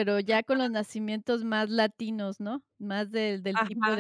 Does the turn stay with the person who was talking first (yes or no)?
no